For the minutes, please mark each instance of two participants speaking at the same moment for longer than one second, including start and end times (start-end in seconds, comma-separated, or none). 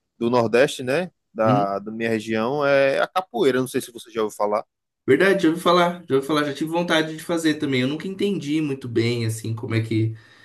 none